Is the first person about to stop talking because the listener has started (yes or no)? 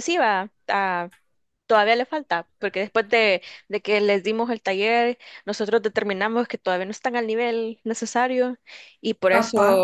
no